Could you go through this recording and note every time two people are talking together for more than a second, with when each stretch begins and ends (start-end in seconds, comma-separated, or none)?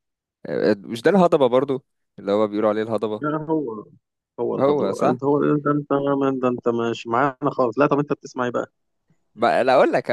none